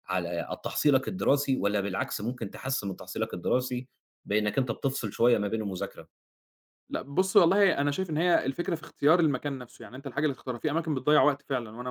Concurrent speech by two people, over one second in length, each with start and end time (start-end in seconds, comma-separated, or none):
none